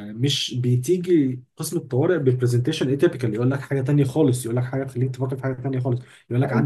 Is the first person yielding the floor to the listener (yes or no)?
no